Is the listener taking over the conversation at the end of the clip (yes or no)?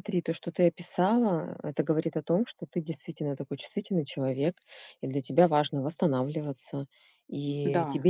no